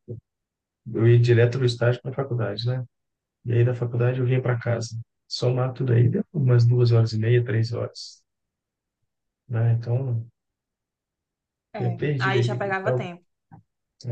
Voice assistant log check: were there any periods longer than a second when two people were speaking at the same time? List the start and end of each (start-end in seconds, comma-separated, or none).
11.8-13.1